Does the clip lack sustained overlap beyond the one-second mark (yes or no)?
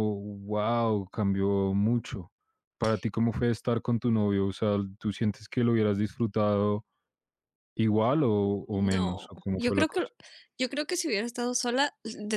no